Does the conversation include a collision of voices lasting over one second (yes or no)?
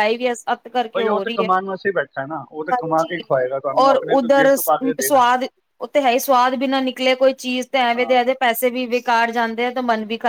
yes